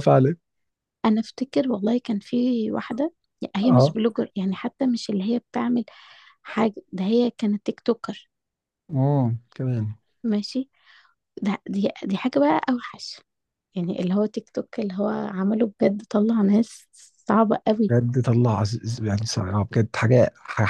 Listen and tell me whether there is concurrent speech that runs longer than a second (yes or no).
no